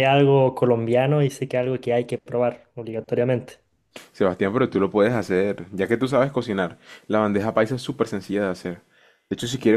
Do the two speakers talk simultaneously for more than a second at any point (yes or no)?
no